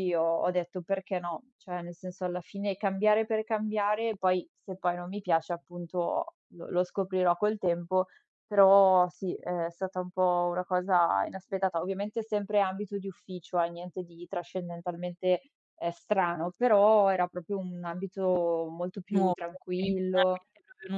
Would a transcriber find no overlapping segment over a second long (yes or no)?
no